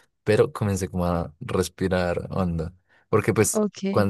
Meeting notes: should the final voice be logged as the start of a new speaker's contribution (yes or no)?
no